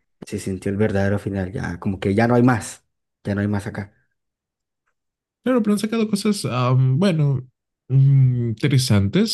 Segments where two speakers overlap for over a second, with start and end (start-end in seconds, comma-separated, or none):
none